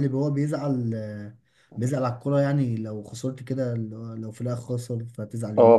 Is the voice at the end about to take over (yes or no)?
yes